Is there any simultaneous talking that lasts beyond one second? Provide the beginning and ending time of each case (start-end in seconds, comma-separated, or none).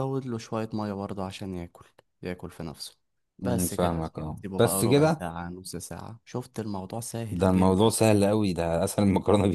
3.4-5.2